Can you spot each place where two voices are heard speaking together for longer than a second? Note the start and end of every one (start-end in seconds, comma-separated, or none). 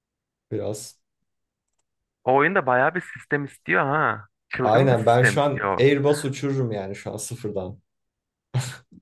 4.6-5.8